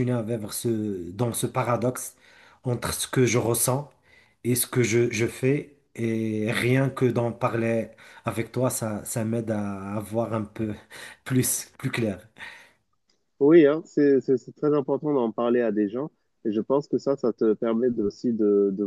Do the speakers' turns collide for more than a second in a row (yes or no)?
no